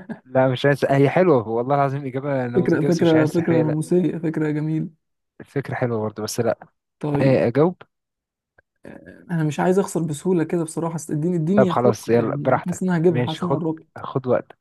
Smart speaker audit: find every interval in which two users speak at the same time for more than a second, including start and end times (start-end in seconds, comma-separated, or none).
2.5-3.8, 11.6-13.9